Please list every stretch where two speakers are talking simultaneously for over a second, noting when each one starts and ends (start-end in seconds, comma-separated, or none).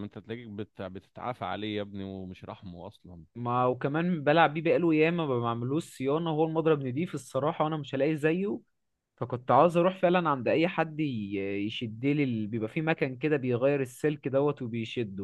none